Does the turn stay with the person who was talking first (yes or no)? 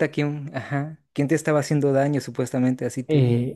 no